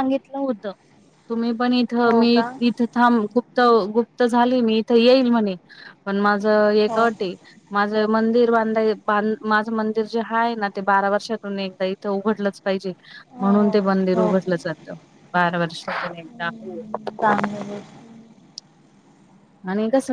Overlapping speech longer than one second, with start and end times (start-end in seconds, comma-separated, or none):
none